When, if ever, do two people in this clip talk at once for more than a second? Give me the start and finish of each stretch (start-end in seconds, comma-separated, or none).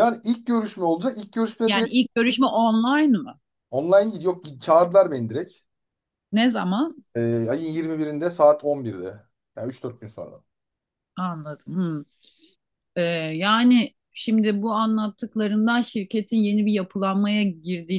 none